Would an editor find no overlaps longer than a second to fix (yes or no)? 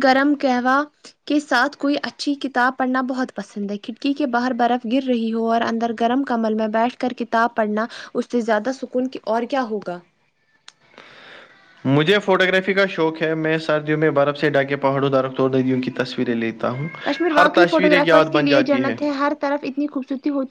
no